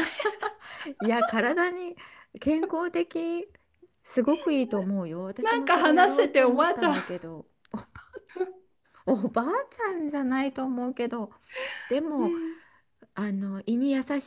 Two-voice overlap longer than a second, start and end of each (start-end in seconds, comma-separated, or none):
5.4-7.2